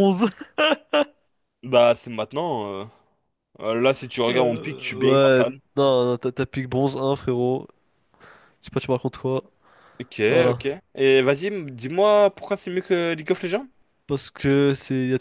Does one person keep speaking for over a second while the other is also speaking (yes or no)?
yes